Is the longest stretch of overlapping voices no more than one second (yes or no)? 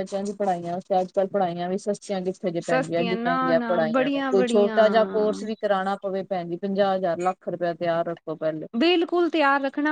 no